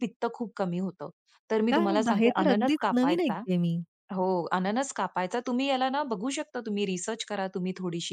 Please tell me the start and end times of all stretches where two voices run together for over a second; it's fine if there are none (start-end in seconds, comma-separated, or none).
1.7-3.4